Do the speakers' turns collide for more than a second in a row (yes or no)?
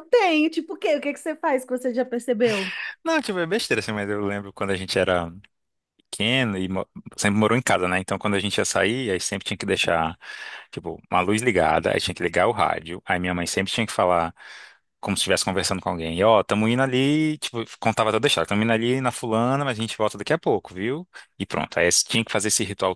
no